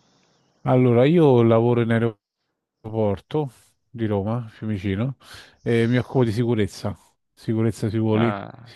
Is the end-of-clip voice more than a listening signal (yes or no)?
no